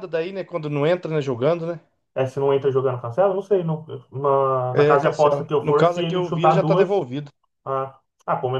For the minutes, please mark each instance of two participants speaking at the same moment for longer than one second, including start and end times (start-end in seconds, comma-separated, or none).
4.7-7.0